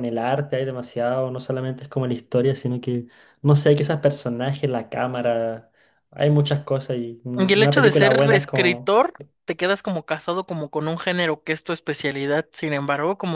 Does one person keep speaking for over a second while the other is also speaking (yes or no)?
yes